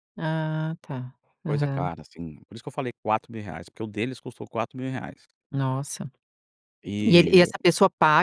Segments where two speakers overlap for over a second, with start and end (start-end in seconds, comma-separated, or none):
none